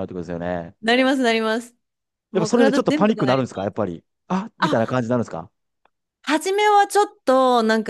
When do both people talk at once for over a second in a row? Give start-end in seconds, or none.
2.3-3.7